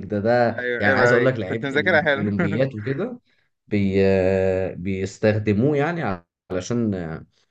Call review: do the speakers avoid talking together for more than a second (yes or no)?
no